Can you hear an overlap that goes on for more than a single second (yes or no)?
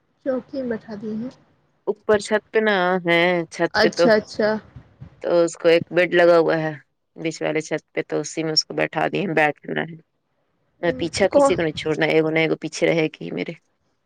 no